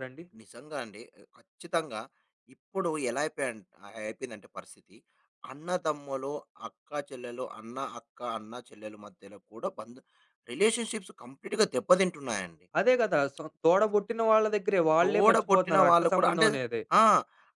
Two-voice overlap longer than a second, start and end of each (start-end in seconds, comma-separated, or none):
15.0-16.5